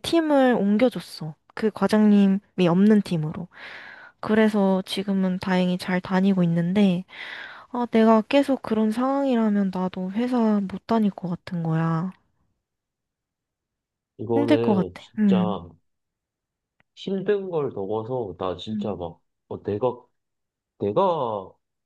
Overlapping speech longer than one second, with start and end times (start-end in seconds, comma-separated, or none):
14.3-15.6